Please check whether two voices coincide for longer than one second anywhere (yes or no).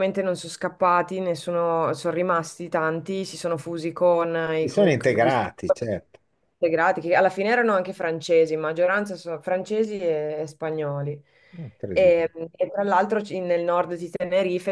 yes